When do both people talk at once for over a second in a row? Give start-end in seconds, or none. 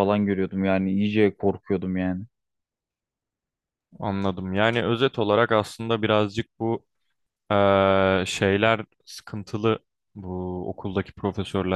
none